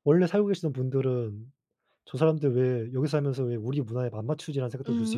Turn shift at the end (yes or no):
yes